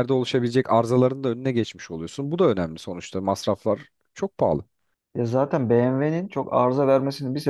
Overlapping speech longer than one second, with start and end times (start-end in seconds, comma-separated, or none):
none